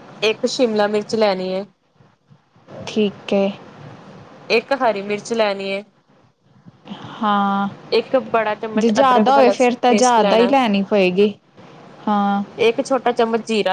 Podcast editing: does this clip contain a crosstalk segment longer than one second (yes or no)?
yes